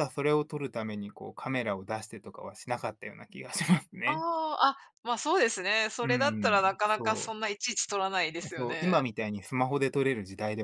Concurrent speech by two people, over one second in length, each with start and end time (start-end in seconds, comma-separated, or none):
6.0-7.3